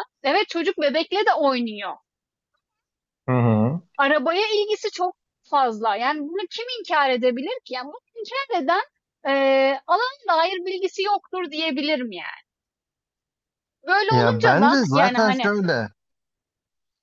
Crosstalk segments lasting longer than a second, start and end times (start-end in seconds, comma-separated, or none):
14.1-15.5